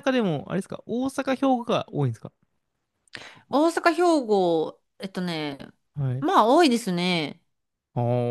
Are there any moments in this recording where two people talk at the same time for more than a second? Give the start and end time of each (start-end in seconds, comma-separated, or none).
none